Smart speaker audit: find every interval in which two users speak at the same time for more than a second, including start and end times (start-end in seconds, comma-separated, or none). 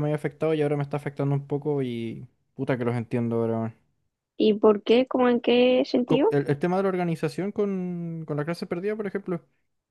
none